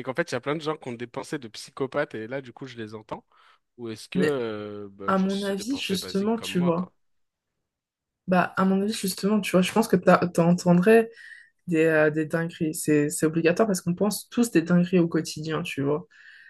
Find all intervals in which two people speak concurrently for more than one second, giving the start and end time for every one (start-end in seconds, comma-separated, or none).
5.1-6.9